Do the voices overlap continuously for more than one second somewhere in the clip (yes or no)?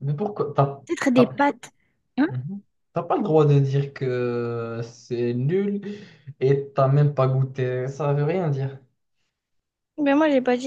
no